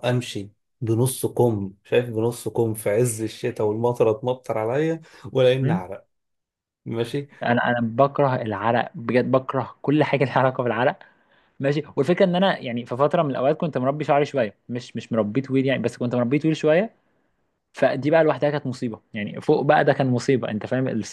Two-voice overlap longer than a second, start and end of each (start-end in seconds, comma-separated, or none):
none